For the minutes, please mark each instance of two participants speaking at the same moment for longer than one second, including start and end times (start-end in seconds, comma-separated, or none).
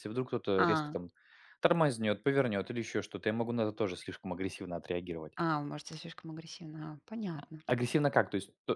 none